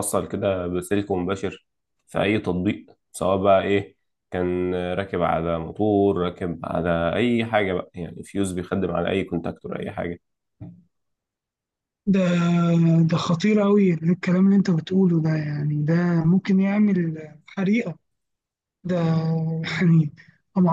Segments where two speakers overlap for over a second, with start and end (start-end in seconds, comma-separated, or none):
none